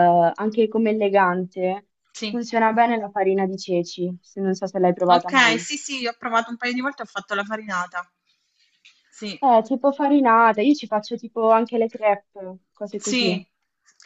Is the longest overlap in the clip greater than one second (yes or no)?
no